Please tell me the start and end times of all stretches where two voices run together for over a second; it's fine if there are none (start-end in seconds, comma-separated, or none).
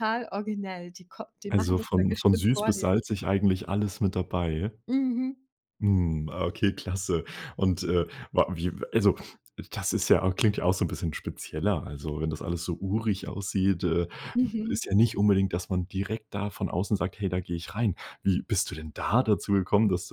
1.5-2.9